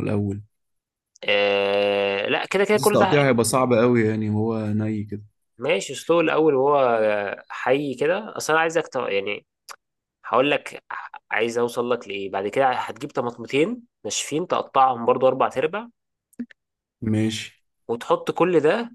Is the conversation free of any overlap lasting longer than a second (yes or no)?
yes